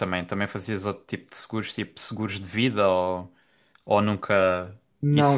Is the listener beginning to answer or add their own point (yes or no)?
yes